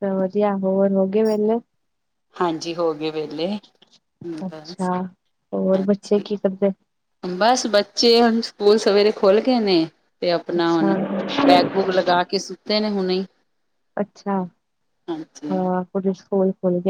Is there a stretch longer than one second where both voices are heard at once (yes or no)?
no